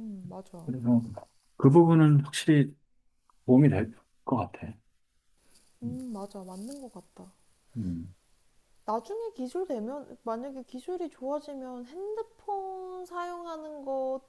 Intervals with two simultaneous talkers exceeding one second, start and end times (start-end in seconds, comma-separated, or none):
none